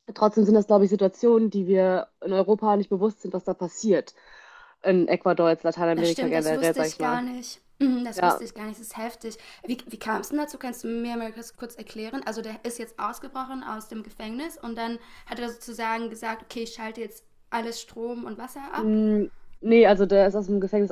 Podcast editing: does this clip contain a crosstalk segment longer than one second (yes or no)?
yes